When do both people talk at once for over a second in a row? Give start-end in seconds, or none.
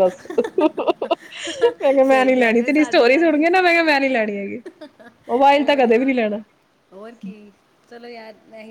2.1-3.5